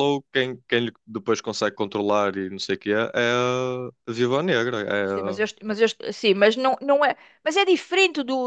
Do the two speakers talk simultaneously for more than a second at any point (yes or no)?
no